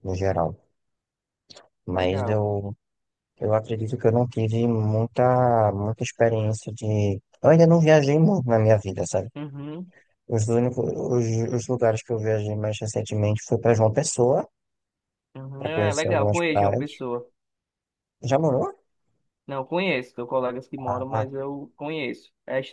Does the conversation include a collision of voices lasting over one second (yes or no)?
yes